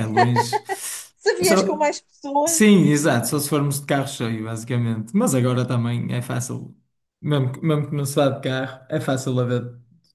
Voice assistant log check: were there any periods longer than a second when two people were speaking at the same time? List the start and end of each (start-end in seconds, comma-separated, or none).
none